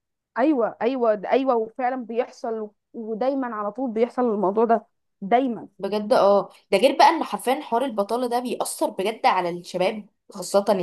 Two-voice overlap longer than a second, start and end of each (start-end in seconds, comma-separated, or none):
none